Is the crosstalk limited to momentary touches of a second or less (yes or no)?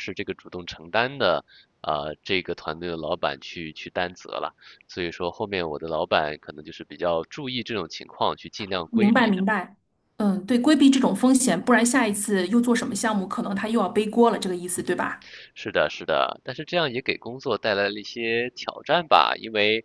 yes